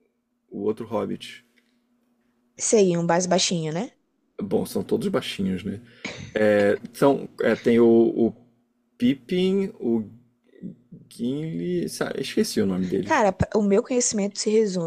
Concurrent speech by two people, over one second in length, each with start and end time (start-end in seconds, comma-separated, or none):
none